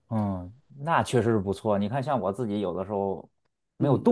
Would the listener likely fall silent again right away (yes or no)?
yes